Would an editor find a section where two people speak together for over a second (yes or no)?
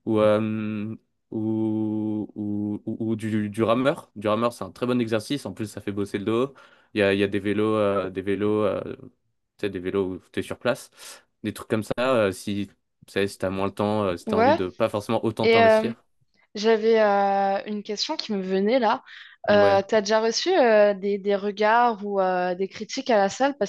no